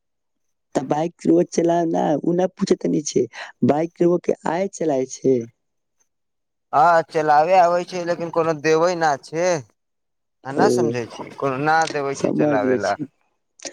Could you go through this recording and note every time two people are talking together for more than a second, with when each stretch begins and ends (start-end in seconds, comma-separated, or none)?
10.6-12.9